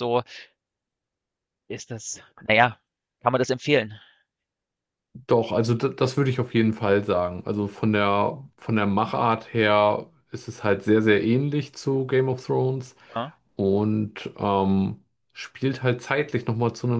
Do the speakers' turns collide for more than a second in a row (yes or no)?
no